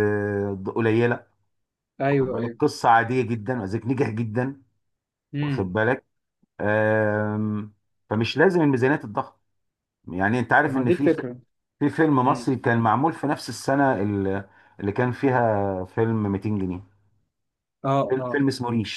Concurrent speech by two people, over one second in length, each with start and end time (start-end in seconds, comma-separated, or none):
none